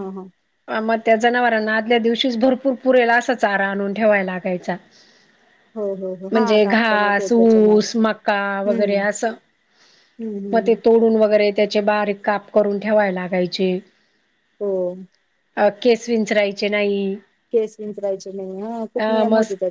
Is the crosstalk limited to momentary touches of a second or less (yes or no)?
no